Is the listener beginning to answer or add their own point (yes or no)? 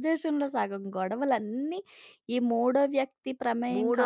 yes